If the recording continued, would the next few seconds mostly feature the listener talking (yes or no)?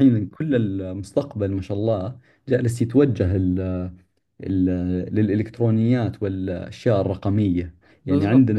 no